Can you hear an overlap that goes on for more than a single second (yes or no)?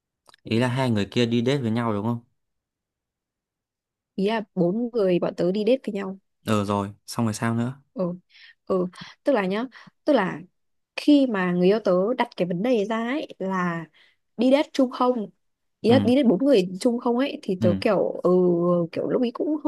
no